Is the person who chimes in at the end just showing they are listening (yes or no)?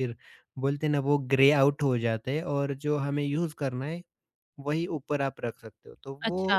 no